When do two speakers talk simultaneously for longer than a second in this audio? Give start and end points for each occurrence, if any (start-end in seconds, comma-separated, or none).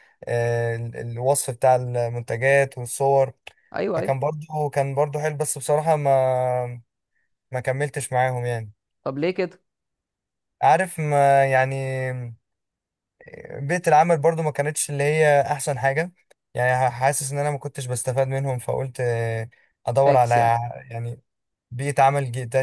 none